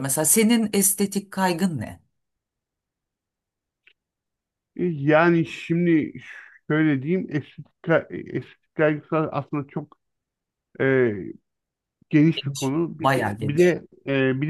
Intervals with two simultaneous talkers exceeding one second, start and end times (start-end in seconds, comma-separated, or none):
12.3-13.8